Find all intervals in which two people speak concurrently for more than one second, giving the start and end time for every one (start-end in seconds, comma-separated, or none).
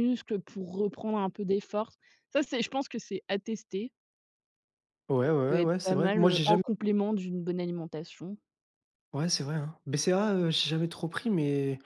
5.2-6.6